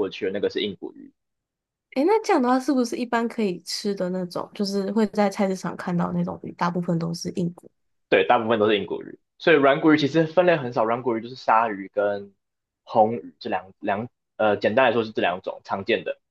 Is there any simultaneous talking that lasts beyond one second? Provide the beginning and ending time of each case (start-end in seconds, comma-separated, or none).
none